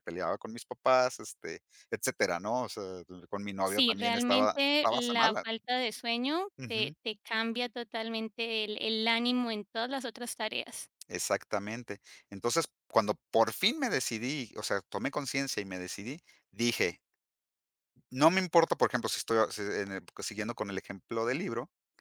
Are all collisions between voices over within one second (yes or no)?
no